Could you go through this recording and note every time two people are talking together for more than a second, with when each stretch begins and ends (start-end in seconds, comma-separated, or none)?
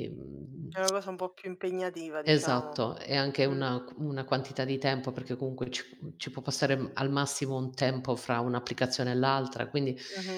none